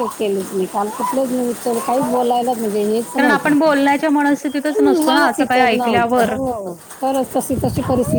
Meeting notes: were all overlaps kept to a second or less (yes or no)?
no